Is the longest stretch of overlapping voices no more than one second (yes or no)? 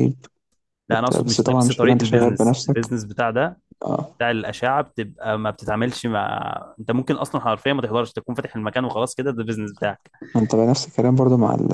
no